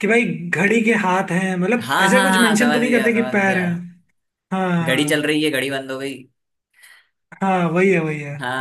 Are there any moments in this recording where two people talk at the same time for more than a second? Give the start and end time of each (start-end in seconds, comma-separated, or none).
1.8-3.6